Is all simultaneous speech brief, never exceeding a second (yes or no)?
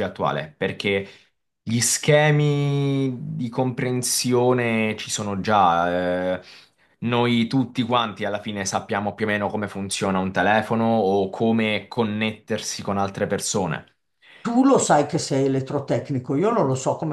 yes